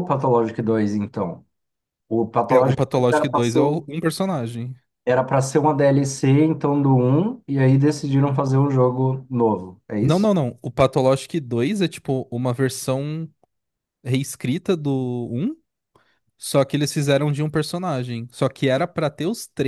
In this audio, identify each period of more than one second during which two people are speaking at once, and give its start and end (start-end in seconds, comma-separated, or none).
2.5-3.9